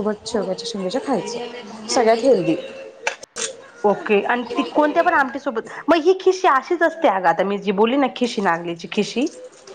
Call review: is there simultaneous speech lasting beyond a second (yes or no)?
no